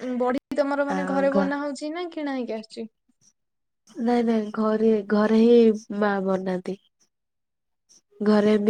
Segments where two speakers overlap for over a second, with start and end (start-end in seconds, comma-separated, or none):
none